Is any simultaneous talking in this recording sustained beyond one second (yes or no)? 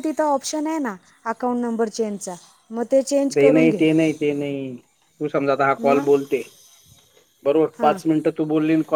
no